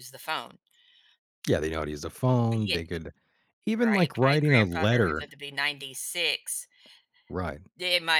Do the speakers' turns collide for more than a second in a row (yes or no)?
yes